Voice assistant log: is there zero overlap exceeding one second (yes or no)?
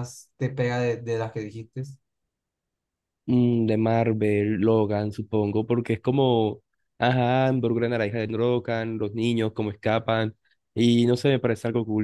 yes